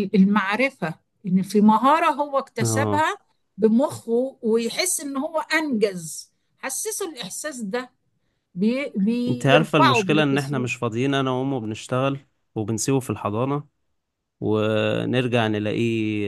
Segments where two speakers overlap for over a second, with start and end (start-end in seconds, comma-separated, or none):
9.3-10.7